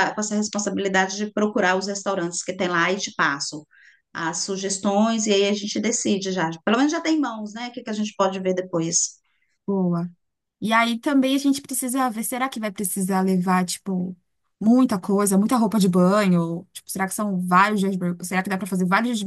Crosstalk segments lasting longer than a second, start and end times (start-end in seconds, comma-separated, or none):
none